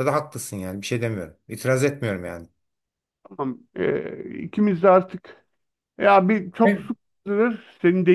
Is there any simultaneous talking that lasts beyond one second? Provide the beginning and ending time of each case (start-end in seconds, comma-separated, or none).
none